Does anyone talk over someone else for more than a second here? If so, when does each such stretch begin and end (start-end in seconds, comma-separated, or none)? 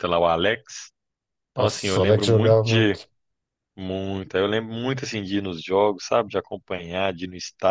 1.5-3.0